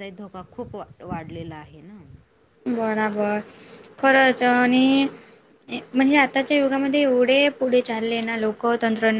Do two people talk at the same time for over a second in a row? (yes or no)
no